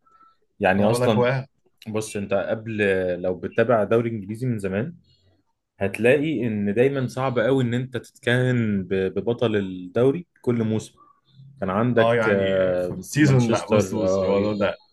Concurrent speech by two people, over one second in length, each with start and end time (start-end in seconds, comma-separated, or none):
12.0-14.3